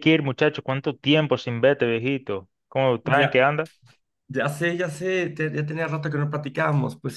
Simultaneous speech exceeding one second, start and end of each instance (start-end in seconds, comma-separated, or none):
none